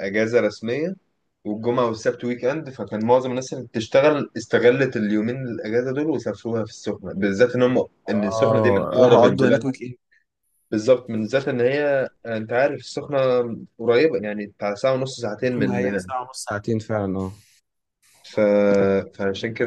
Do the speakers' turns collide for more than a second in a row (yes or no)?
yes